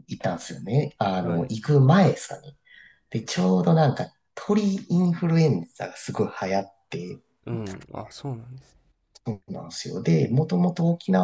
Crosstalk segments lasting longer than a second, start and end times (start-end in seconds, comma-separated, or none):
none